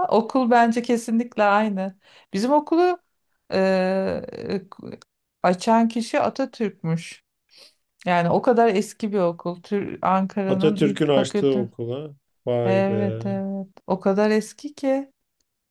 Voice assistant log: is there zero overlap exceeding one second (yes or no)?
no